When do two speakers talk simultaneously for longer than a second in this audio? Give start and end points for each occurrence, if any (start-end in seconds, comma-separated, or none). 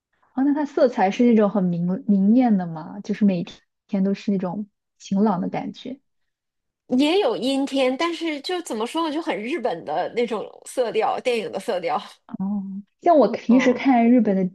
none